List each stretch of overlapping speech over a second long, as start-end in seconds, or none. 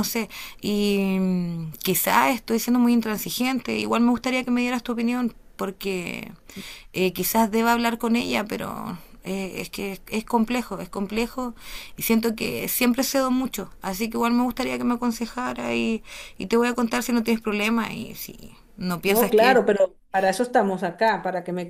none